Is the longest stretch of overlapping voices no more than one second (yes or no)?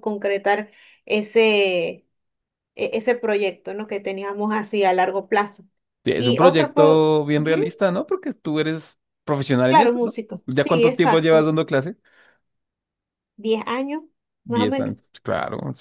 no